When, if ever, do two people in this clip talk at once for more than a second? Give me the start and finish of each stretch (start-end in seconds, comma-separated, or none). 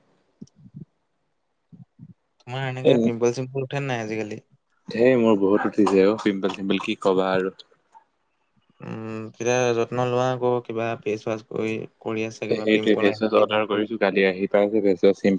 12.5-13.9